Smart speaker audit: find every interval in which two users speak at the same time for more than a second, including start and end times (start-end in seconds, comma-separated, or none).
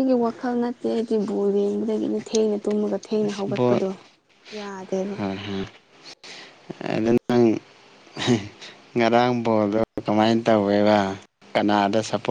none